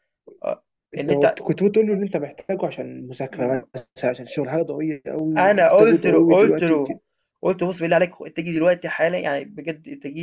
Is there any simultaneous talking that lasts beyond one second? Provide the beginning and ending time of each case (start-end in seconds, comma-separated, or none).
5.4-7.0